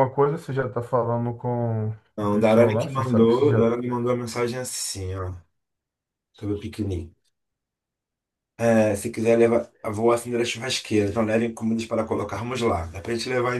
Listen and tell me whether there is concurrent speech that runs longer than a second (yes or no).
yes